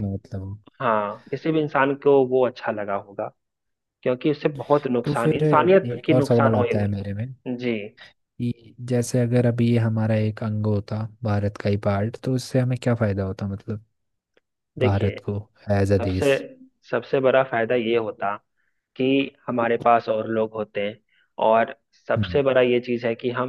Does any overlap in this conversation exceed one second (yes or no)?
yes